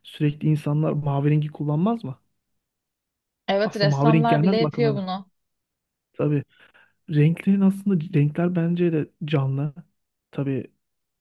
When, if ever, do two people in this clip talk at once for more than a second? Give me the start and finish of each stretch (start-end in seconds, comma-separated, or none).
3.6-5.0